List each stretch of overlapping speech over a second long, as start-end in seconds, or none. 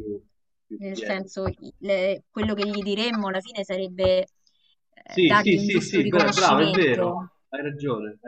5.0-7.1